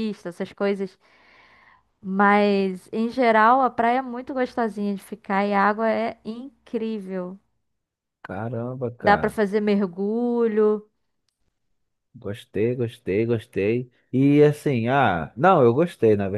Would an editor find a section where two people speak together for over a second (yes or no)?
no